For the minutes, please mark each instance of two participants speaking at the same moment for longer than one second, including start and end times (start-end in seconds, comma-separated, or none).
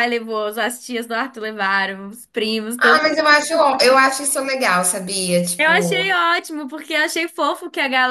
none